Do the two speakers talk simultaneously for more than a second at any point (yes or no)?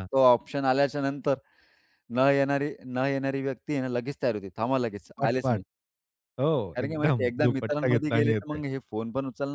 yes